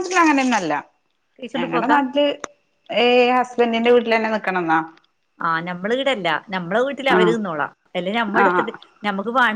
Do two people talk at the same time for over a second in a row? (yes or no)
no